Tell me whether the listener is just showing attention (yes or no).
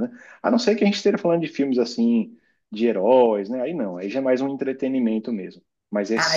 no